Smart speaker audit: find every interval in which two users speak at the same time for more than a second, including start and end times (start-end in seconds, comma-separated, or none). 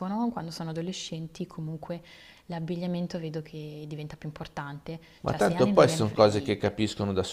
5.2-6.7